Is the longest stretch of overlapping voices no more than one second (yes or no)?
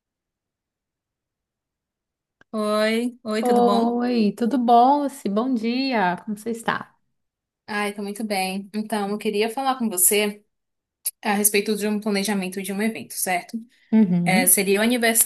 yes